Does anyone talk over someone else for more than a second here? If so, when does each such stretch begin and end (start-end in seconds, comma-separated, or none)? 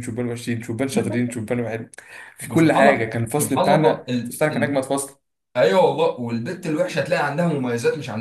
2.4-4.8